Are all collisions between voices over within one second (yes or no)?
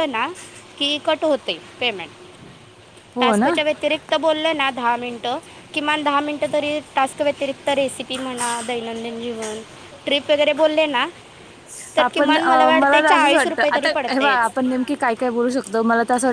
no